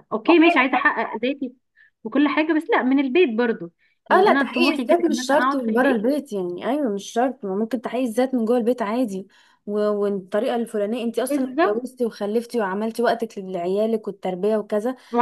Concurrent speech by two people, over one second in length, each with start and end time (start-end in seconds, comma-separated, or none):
4.1-6.1